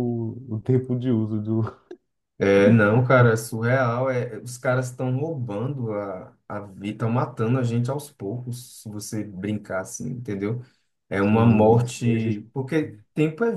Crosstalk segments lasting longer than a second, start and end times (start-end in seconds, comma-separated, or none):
11.2-12.4